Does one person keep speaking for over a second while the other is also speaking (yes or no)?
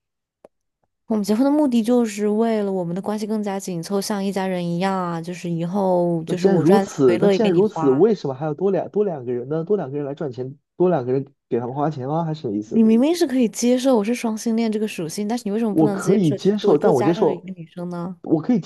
yes